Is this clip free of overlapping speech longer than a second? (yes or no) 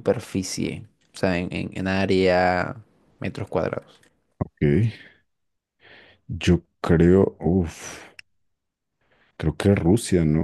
yes